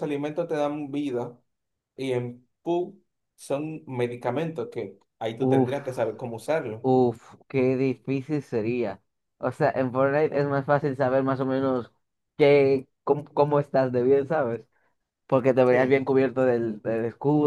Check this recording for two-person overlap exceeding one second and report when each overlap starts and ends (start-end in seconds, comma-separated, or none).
none